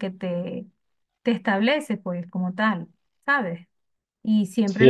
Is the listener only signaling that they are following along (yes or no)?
no